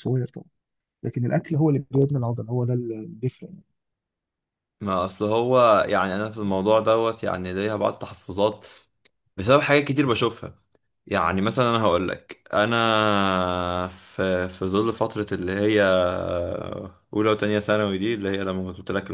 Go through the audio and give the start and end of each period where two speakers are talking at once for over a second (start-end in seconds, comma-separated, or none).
none